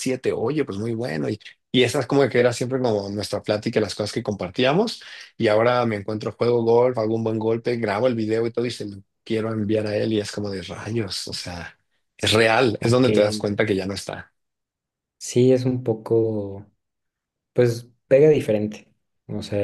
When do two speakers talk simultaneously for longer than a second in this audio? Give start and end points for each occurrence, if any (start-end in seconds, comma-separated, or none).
none